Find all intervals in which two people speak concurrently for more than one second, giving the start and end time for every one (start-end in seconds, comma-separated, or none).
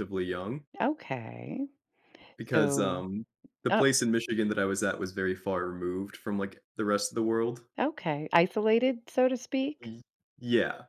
none